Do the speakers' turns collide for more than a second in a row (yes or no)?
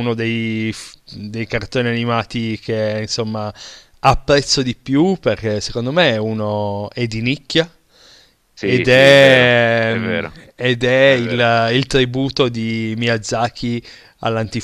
yes